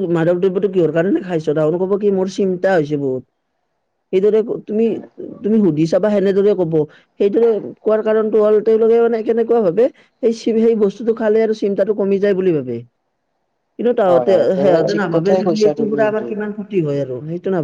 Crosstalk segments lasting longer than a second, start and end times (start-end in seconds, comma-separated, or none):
14.1-16.1